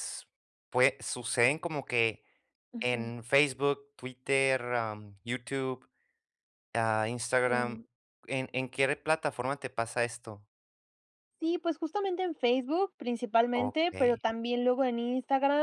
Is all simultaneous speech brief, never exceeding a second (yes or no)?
yes